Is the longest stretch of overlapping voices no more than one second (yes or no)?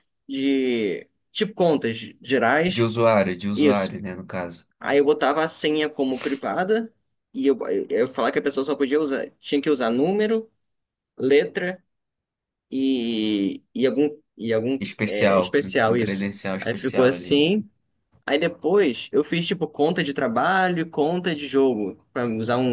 no